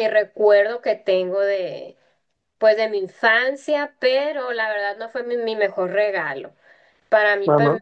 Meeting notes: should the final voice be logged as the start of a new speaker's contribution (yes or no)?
no